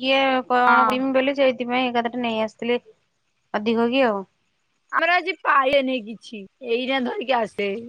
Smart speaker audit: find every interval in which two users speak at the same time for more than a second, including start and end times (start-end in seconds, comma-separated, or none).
none